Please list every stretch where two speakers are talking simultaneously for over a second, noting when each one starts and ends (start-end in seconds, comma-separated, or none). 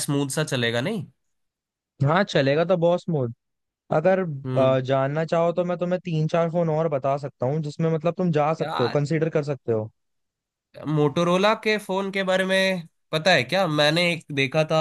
none